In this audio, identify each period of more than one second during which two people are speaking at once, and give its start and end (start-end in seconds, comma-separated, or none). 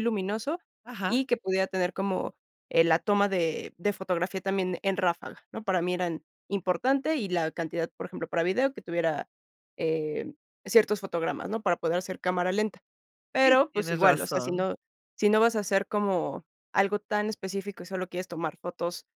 13.4-14.7